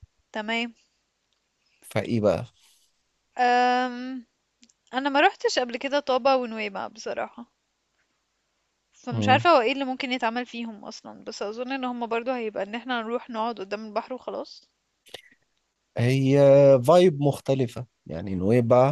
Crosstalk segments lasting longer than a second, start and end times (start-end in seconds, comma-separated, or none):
none